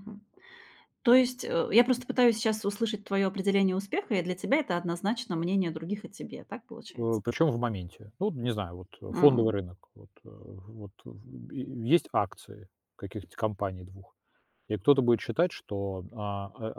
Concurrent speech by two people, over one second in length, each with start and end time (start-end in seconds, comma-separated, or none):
none